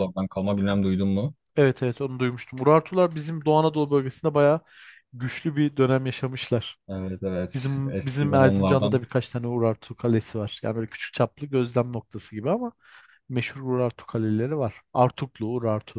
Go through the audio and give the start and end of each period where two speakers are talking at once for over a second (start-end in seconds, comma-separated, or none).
7.5-9.0